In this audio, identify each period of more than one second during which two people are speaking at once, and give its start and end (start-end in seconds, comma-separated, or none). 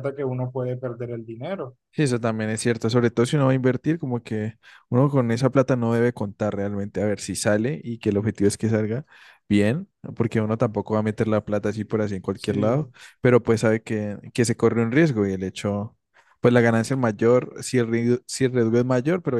none